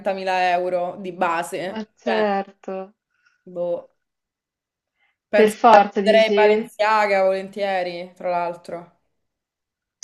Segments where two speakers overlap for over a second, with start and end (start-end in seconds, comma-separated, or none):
5.3-6.7